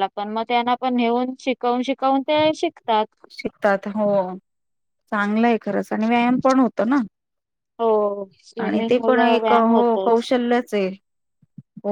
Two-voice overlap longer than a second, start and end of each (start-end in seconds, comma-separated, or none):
8.6-10.3